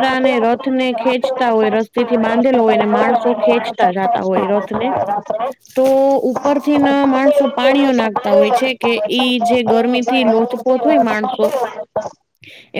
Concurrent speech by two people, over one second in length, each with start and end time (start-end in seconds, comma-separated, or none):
8.1-11.4